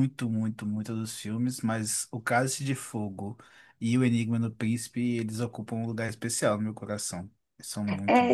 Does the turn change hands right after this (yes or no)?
yes